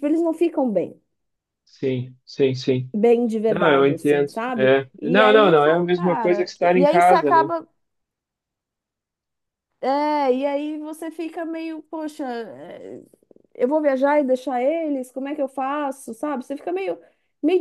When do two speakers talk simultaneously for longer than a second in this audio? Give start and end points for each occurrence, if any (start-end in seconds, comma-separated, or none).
3.5-7.5